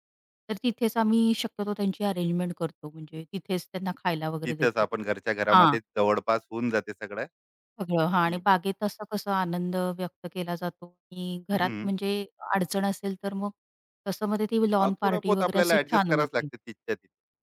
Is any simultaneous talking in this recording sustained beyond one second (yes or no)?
yes